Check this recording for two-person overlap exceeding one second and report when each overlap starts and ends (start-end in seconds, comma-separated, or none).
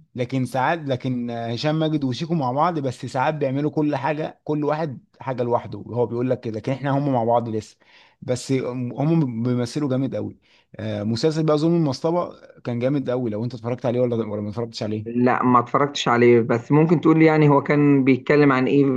none